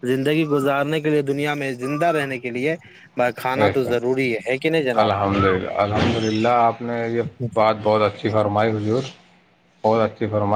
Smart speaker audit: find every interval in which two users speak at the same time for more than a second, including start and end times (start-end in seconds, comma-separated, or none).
none